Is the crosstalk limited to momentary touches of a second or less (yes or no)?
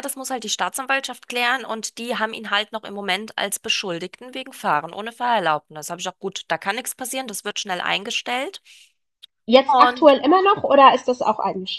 yes